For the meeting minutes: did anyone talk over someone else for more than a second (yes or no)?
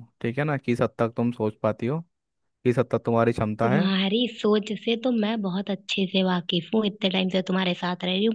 no